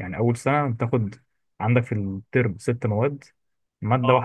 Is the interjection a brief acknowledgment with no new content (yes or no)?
yes